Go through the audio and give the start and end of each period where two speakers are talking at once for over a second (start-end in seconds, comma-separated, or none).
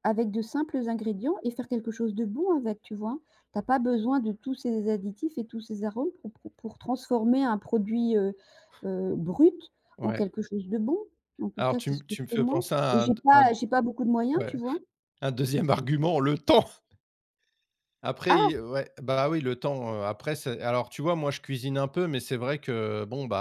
11.6-13.5